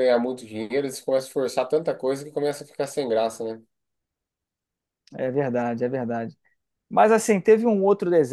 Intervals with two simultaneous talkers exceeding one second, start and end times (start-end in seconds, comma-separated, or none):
none